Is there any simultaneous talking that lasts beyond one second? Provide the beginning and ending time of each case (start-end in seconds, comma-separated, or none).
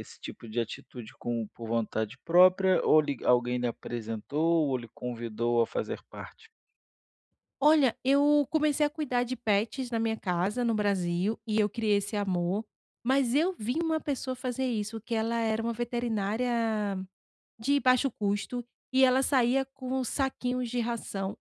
none